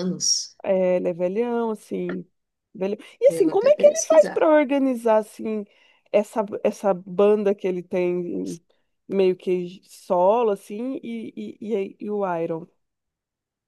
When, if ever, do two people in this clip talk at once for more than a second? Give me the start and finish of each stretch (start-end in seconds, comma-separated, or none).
3.3-4.5